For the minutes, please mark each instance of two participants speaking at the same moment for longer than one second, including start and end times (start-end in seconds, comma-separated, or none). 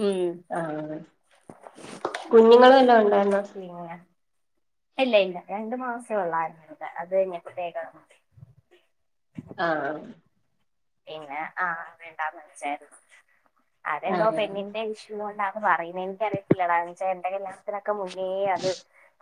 none